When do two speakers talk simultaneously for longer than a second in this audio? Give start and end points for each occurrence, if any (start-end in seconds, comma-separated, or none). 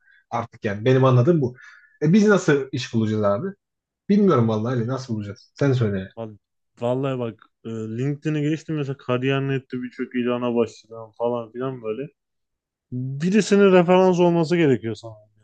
none